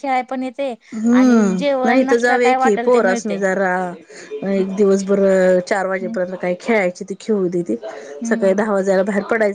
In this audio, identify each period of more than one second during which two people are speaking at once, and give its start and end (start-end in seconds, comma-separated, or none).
1.2-3.4